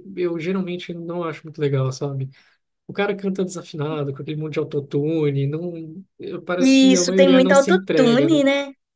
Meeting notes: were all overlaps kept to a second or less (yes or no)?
no